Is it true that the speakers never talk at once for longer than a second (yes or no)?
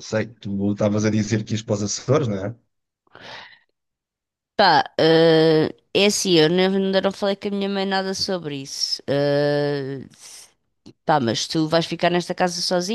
yes